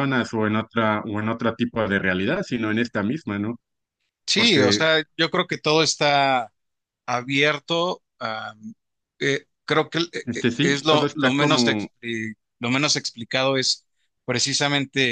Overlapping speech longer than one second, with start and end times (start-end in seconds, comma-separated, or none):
10.3-11.9